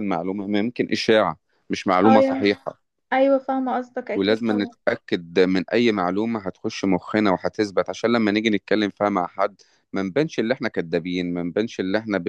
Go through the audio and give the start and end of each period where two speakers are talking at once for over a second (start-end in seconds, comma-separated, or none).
none